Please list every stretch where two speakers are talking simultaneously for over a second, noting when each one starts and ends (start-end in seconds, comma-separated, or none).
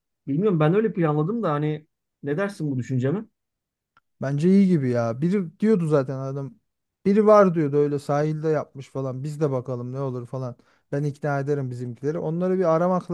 none